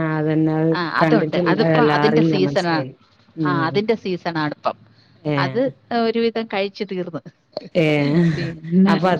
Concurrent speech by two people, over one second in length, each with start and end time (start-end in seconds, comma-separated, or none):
0.8-2.8